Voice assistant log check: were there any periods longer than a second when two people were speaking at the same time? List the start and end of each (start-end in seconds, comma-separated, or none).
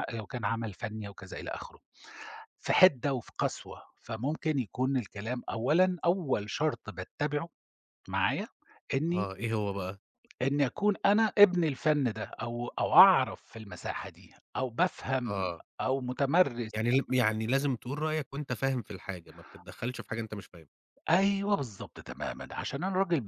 none